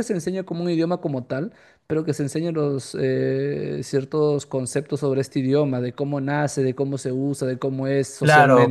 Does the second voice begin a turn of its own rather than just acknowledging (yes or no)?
yes